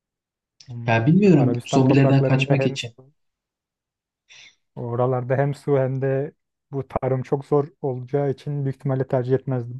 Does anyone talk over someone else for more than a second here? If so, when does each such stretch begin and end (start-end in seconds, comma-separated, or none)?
0.9-2.9